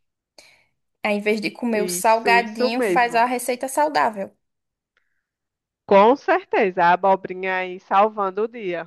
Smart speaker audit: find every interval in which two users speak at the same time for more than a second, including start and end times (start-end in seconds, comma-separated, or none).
1.7-3.2